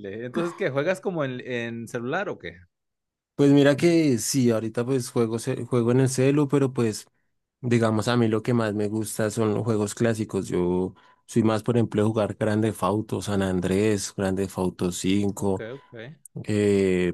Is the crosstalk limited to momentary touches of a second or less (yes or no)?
yes